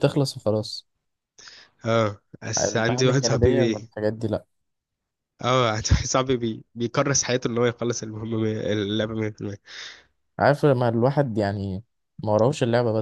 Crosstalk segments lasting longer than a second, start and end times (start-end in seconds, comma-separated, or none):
2.6-3.8